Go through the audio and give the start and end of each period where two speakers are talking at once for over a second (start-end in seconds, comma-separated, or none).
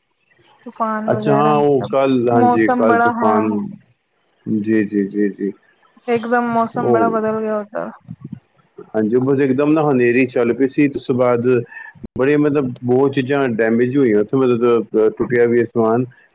1.1-3.4